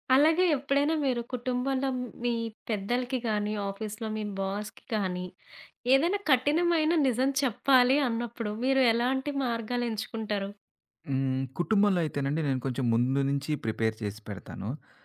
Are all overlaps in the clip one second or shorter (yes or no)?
yes